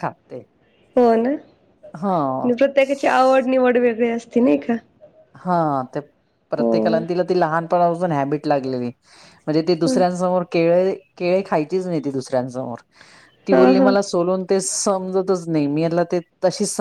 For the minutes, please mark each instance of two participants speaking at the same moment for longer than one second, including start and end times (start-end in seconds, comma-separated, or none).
none